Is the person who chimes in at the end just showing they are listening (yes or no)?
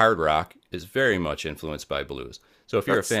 yes